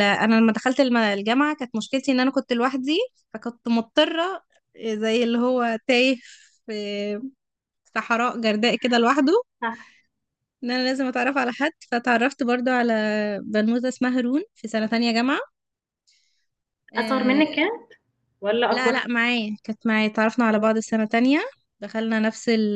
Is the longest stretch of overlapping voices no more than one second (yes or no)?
yes